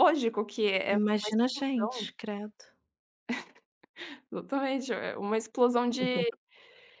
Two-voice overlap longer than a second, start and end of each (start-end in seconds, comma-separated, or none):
0.9-2.1